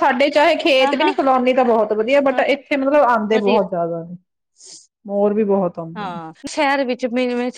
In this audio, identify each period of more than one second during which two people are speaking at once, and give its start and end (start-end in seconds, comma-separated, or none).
none